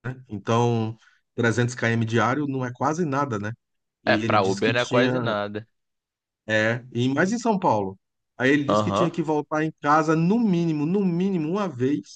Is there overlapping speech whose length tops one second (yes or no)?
yes